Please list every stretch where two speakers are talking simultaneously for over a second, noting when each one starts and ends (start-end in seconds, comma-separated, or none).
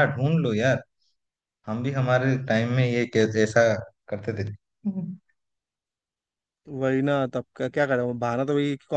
none